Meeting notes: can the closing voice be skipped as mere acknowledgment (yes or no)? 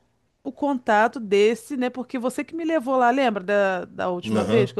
no